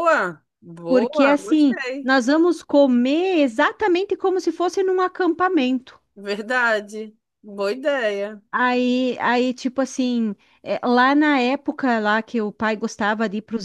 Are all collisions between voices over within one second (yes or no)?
no